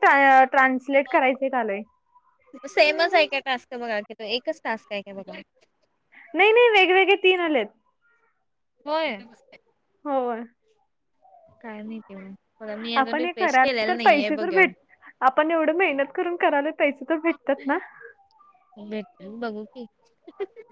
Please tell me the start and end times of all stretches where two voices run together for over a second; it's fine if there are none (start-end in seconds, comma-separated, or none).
13.0-14.6